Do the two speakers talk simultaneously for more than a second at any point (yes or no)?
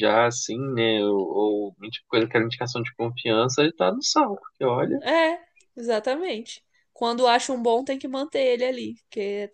no